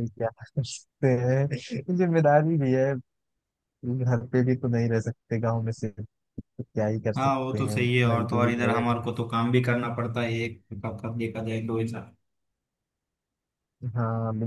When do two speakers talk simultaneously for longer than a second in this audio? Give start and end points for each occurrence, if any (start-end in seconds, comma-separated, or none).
7.2-8.8